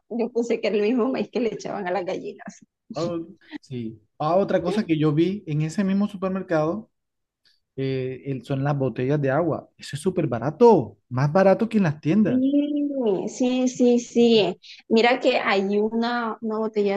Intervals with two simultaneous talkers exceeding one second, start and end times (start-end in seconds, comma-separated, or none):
none